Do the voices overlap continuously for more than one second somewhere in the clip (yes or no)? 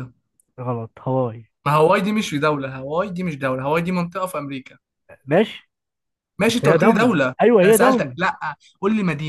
yes